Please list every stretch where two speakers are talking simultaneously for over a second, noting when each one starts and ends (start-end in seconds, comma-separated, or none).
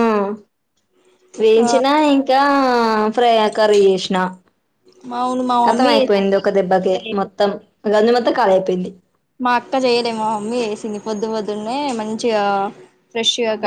5.7-7.3